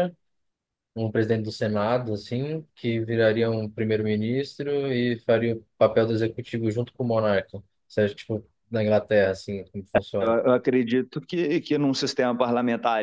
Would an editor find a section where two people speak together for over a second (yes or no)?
no